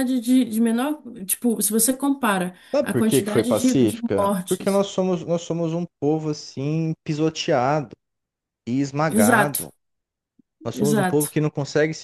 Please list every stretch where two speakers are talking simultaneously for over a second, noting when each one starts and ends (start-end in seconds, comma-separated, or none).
2.7-4.8